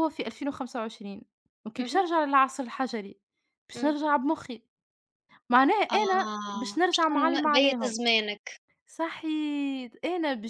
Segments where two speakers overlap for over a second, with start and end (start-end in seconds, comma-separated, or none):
5.9-8.0